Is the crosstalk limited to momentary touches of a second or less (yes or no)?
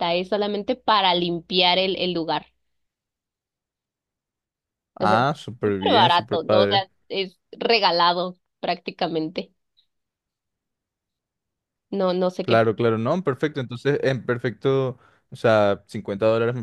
no